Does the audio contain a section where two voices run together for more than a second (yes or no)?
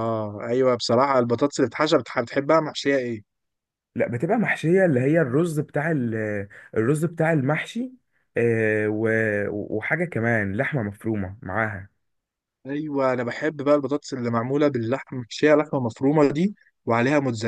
no